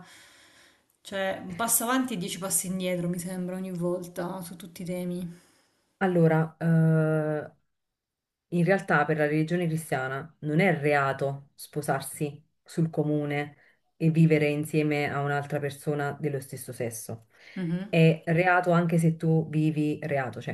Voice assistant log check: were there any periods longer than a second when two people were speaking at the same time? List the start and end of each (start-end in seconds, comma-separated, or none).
none